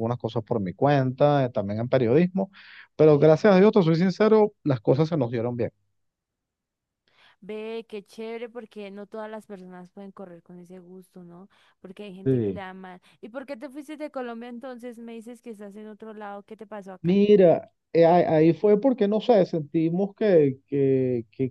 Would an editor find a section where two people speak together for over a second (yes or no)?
no